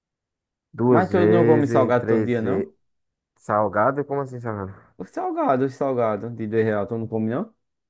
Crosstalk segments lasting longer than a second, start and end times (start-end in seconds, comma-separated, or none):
0.9-2.7